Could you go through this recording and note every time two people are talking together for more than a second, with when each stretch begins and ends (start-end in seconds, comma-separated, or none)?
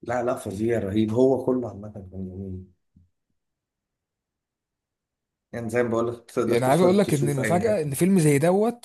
6.5-8.0